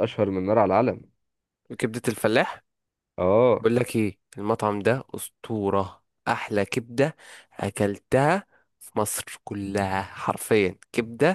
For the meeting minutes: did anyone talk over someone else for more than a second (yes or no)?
no